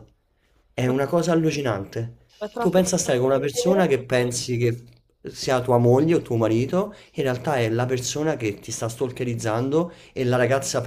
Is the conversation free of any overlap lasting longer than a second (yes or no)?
no